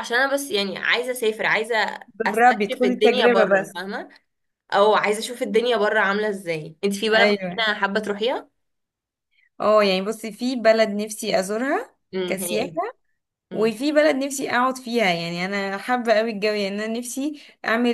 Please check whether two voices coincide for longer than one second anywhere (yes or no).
yes